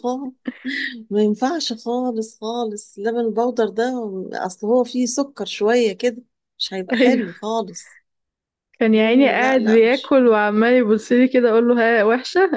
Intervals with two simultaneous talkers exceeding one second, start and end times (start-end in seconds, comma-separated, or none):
8.9-10.2